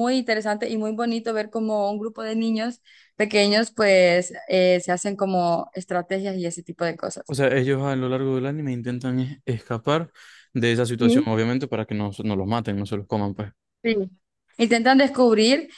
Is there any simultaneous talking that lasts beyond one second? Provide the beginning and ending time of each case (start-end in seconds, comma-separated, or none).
none